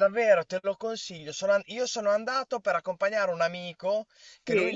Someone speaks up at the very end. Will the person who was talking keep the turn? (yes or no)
yes